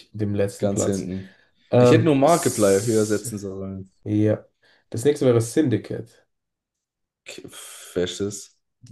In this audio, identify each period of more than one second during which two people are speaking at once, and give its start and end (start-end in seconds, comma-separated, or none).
1.8-3.3